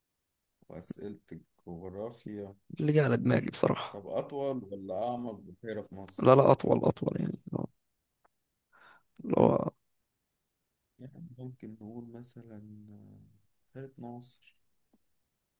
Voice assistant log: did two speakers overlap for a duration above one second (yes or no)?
no